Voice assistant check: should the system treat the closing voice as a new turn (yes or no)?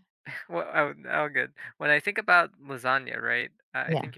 no